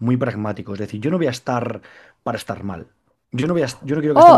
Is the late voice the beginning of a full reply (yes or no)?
yes